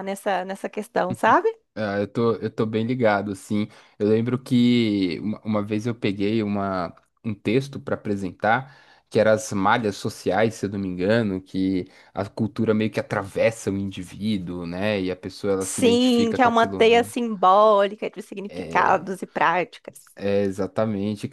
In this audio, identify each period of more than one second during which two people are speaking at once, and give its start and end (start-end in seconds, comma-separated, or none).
15.6-17.1